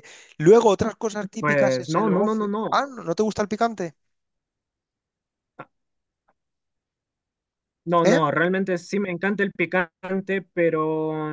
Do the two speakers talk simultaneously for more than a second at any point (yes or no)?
yes